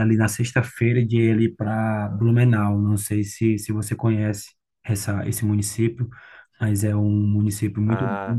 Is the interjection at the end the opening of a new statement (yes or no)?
no